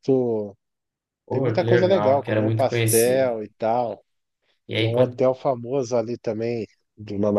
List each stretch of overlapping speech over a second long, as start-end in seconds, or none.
1.3-3.4